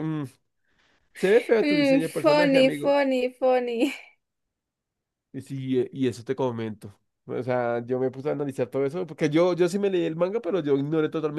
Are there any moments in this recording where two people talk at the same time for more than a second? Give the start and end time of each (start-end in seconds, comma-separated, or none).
1.6-3.0